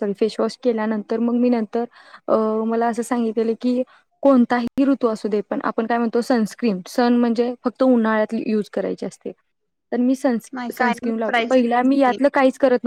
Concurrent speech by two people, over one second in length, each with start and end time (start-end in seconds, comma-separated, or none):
10.8-12.3